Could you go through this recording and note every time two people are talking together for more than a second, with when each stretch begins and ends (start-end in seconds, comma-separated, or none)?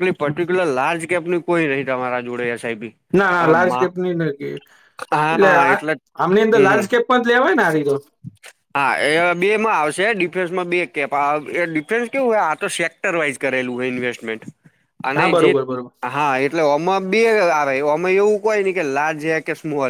none